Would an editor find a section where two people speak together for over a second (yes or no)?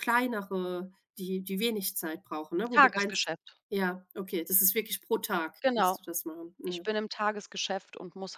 no